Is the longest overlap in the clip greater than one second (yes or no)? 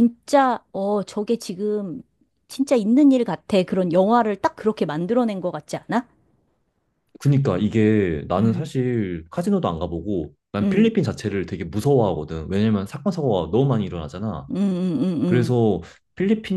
no